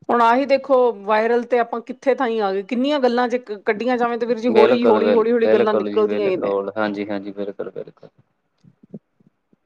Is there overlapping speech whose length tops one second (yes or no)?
yes